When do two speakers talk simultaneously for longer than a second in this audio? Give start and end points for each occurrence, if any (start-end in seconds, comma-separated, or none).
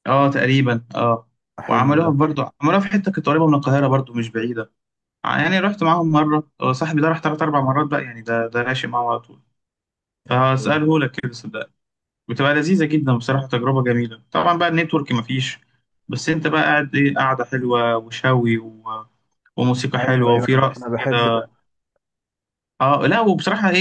20.0-21.3